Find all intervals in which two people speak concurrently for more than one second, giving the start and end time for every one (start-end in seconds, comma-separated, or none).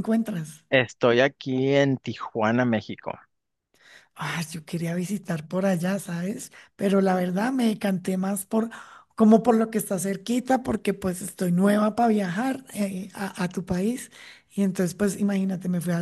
none